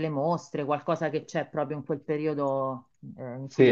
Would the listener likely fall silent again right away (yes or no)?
no